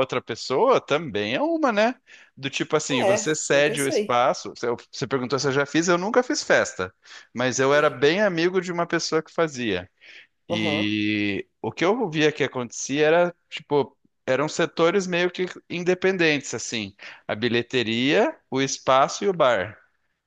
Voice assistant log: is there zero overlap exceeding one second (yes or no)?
no